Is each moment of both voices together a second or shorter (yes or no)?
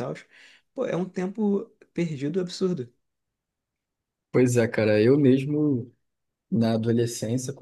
yes